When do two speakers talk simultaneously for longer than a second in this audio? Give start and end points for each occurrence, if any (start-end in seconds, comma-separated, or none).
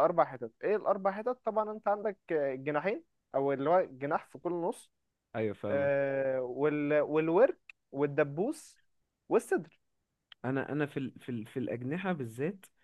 none